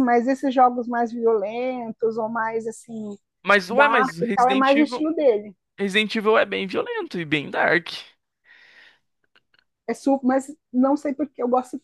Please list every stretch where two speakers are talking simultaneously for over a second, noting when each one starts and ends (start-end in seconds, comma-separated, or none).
3.7-5.0